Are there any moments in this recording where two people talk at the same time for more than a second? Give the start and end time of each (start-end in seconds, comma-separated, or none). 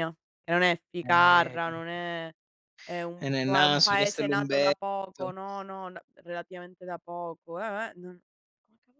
3.2-5.2